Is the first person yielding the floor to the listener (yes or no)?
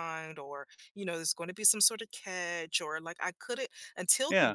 no